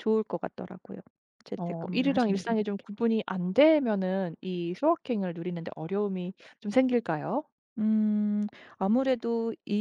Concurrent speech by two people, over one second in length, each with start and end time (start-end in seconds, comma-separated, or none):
1.6-2.9